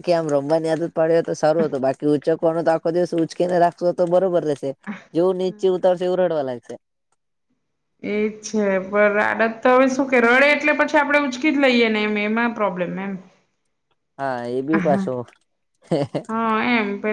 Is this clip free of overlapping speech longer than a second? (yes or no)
yes